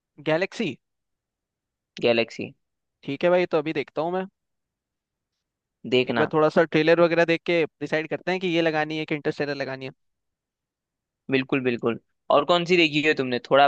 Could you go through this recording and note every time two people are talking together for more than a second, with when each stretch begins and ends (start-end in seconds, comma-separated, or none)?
none